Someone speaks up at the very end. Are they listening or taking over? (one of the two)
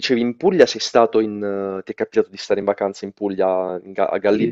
taking over